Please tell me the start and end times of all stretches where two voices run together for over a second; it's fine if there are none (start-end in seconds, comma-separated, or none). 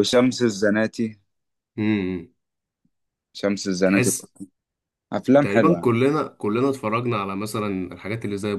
none